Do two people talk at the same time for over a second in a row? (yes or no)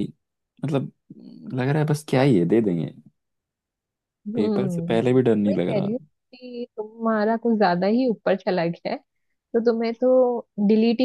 no